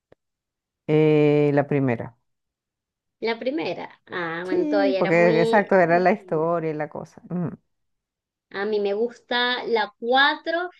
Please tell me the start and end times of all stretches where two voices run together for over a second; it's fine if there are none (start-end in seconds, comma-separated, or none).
4.5-6.5